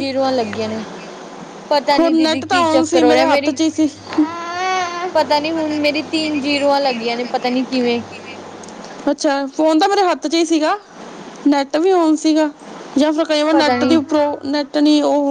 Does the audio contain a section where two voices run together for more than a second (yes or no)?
yes